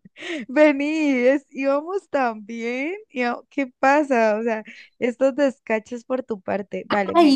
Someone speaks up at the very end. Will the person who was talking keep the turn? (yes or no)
no